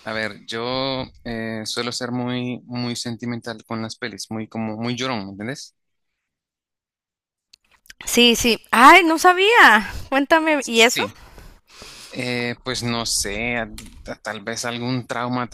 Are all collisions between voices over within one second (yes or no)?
yes